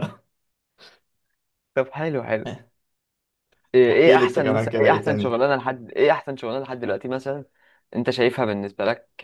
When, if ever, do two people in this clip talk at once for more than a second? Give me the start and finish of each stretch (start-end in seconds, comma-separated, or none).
3.9-5.4